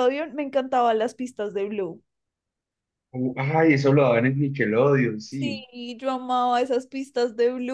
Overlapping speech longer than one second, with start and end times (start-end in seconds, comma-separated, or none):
none